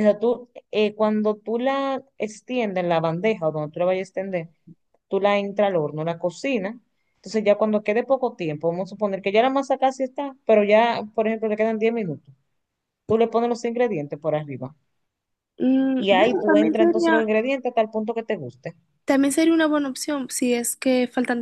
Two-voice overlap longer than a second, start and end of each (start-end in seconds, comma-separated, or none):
16.0-17.3